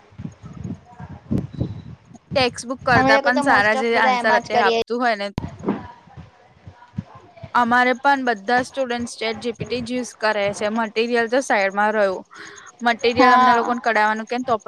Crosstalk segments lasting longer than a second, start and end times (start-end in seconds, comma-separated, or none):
3.0-4.8